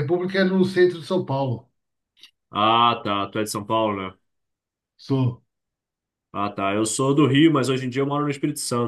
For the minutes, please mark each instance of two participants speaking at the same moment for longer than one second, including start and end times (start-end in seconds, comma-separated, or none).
none